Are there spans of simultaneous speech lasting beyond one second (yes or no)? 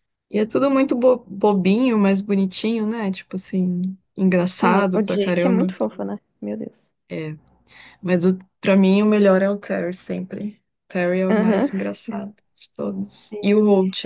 yes